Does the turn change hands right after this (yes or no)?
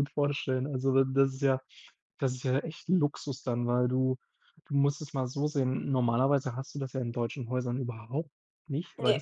no